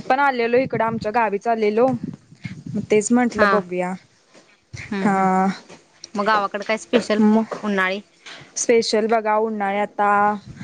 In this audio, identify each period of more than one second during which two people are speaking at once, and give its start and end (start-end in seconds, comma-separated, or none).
none